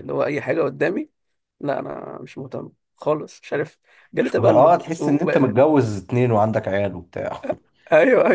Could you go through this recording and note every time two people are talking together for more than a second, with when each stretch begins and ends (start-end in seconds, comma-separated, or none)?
4.2-5.5